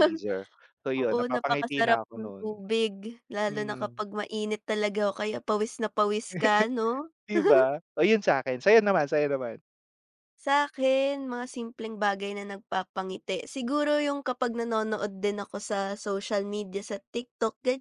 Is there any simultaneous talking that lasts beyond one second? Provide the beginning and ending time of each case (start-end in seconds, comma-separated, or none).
0.9-2.6